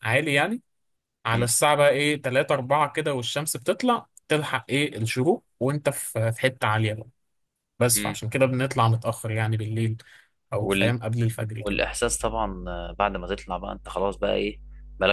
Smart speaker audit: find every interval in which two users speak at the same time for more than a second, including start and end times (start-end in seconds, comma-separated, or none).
none